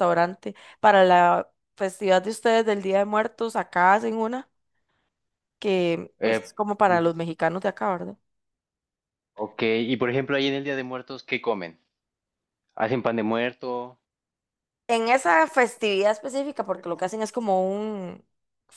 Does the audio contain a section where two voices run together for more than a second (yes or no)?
no